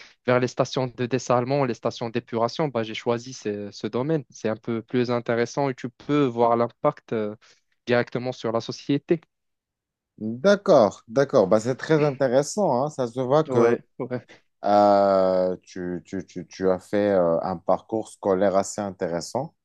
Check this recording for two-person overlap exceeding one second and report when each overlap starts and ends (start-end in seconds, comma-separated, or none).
none